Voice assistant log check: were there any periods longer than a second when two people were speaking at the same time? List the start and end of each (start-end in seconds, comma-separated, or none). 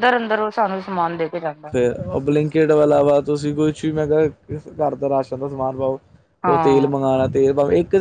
none